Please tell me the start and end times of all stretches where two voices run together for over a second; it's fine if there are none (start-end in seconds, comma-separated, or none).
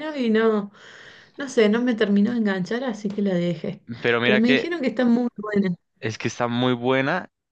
none